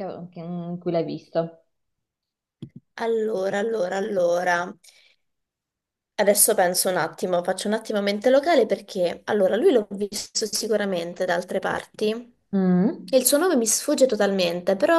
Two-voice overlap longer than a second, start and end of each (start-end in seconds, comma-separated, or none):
none